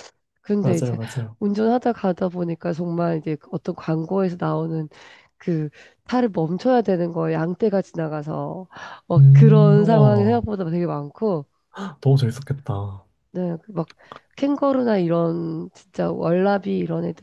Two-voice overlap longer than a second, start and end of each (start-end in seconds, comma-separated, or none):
9.2-10.4